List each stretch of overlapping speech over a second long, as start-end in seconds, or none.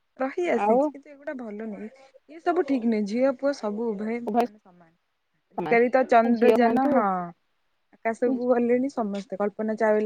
5.5-6.9